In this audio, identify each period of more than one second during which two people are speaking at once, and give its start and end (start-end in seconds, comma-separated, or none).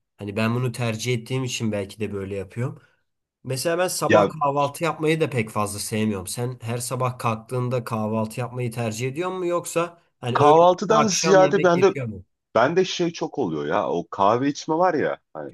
10.3-11.9